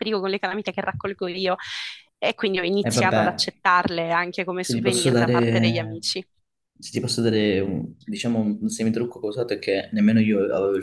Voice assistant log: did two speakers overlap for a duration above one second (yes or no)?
yes